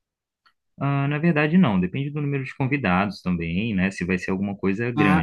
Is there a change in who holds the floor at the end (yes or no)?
yes